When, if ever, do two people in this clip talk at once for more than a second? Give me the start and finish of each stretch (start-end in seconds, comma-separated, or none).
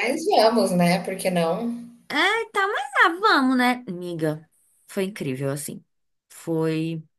none